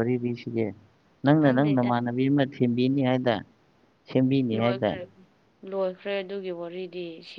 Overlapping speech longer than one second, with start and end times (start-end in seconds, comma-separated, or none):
none